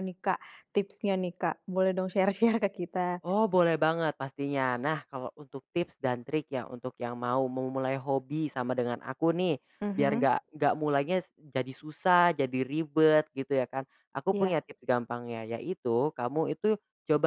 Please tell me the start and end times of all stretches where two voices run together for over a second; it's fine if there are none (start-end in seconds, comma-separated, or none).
none